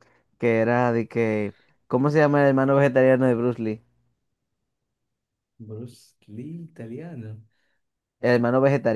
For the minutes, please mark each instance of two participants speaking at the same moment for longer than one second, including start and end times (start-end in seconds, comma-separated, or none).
none